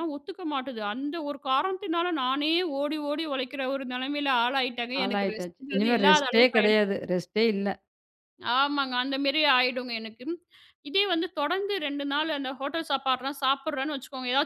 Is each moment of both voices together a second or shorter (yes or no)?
no